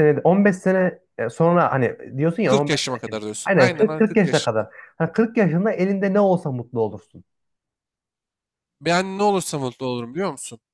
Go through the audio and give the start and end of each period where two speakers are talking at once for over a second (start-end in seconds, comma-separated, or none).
2.4-4.7